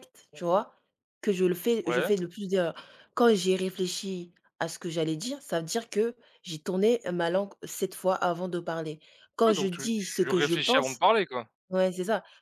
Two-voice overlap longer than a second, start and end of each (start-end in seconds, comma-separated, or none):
9.5-11.0